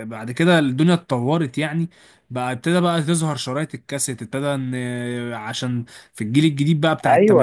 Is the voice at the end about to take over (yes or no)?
yes